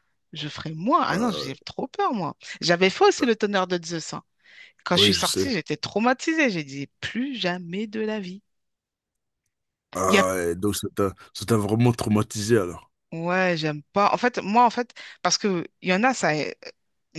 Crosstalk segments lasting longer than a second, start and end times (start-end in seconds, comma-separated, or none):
none